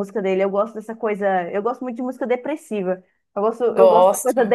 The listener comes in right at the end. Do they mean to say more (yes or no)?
no